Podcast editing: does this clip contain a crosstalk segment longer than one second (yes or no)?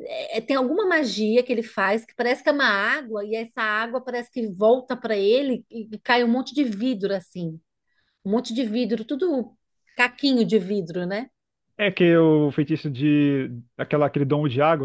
no